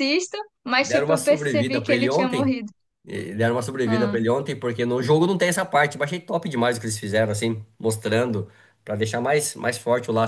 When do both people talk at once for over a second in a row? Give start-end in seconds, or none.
0.8-2.6